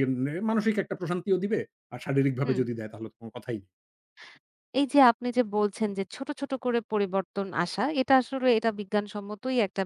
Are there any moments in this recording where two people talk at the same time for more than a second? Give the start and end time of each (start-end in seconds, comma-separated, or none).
none